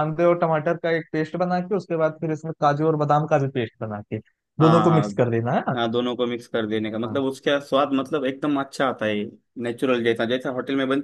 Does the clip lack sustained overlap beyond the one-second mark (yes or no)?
yes